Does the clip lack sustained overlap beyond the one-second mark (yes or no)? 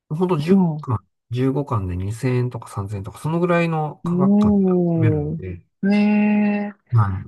no